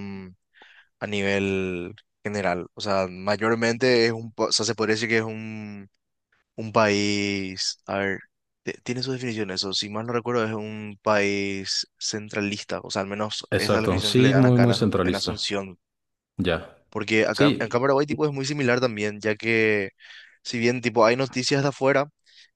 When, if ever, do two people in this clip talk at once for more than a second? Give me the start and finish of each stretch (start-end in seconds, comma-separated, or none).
13.5-15.4